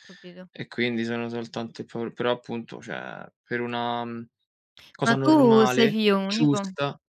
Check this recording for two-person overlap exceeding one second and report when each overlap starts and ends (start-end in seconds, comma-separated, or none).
5.0-6.6